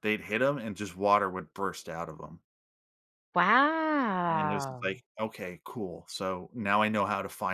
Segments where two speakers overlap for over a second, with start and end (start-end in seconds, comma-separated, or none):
none